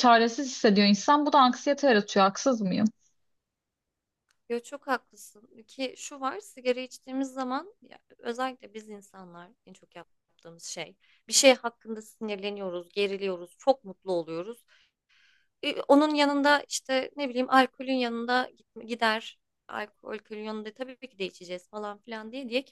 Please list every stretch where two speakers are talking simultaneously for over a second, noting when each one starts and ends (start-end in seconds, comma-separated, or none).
none